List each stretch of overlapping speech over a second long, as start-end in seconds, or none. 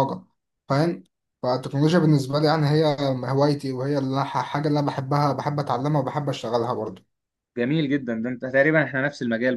none